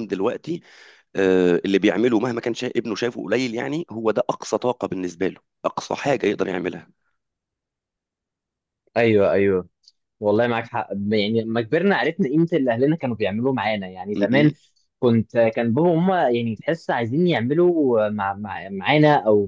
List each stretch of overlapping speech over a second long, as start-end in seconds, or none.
none